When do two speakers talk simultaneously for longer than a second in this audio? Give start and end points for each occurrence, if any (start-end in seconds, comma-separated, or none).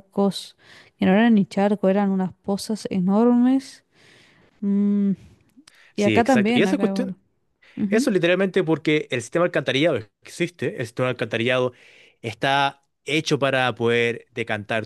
6.0-7.2